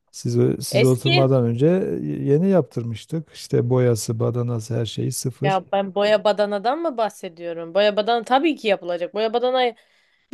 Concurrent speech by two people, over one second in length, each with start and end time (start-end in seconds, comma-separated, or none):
none